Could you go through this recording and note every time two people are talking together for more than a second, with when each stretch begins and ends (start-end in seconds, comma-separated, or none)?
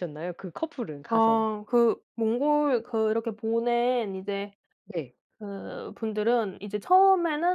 none